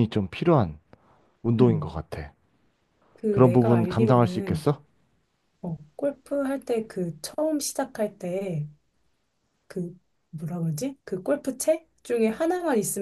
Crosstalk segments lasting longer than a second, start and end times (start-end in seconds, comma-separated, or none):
3.3-4.7